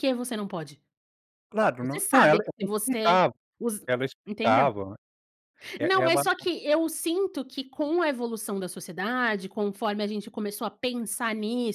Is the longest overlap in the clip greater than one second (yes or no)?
yes